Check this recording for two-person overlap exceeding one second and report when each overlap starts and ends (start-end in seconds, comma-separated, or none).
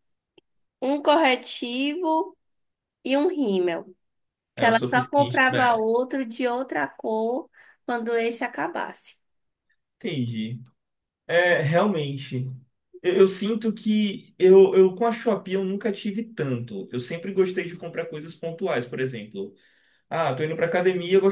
4.5-5.9